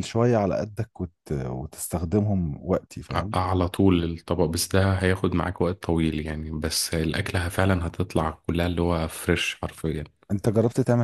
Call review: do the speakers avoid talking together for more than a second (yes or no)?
yes